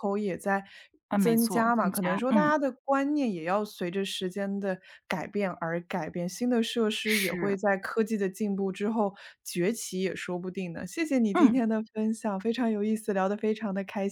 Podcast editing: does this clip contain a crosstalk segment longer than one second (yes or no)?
yes